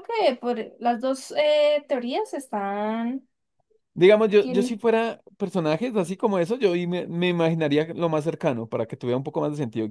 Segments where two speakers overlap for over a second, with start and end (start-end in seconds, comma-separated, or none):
none